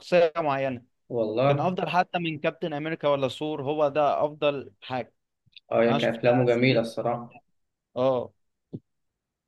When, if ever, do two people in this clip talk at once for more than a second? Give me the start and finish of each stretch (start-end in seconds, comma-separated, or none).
5.9-7.4